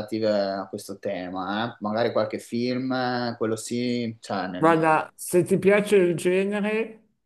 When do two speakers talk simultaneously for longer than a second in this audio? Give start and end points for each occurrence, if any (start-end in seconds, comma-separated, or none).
none